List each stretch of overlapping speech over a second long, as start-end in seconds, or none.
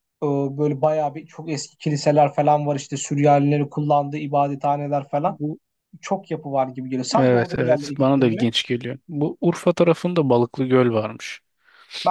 7.2-8.5